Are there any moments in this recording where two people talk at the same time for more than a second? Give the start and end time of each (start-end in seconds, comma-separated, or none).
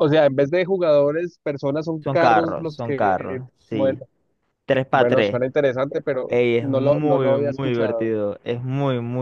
2.0-4.0, 6.3-8.1